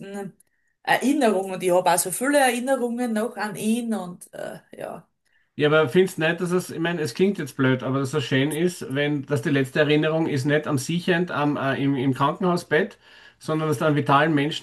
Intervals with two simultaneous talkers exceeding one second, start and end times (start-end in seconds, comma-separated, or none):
none